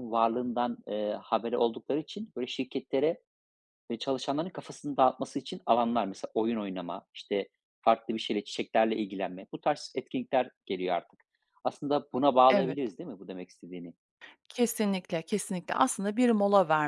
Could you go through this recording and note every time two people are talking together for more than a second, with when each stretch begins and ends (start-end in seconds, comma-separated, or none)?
none